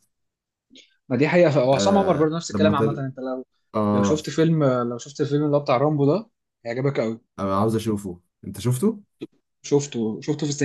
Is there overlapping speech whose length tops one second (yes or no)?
yes